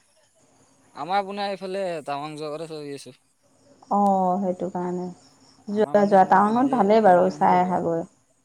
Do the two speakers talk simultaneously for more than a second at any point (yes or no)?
yes